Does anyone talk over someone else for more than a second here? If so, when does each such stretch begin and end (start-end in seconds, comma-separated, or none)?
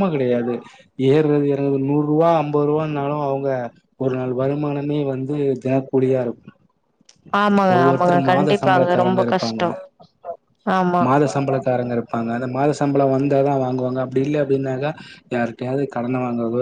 7.8-9.6